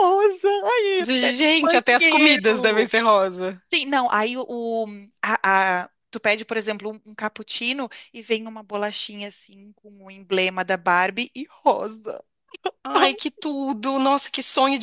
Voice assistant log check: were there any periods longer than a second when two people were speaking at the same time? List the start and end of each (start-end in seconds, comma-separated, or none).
1.0-2.9